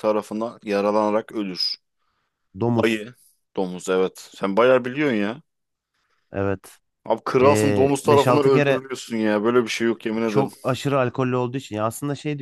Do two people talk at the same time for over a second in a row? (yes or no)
yes